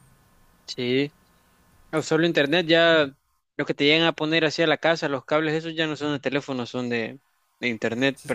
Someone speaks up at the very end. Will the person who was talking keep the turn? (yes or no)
no